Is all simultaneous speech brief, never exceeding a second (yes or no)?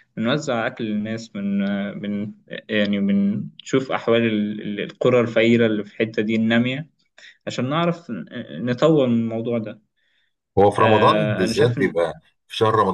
no